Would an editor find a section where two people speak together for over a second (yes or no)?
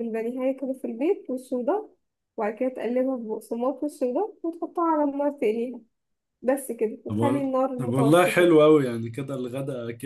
yes